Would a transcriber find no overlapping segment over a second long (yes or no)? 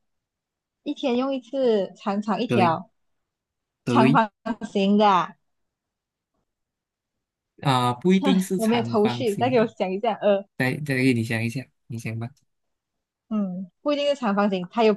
no